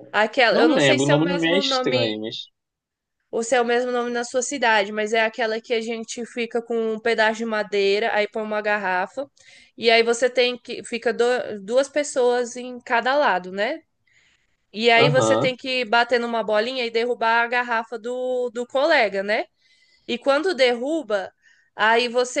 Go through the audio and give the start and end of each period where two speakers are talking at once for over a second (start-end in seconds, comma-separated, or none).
0.5-2.2